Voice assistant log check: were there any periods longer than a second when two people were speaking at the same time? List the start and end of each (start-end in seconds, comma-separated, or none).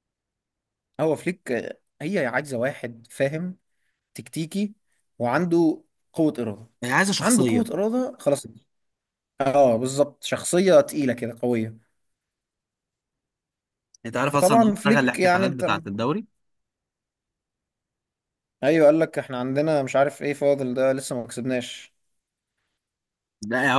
14.2-15.7